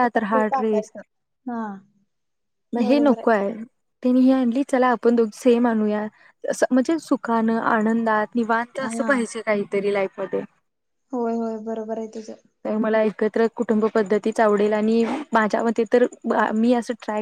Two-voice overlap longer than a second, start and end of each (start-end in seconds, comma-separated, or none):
none